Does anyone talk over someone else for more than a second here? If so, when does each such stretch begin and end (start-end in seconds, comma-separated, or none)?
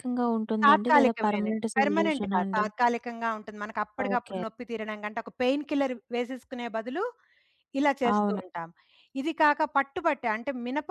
0.6-2.6